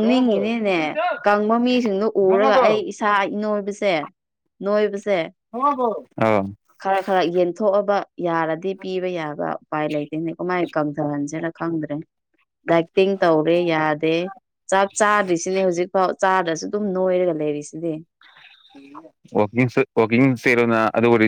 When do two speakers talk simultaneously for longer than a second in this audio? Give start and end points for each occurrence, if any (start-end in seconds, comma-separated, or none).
none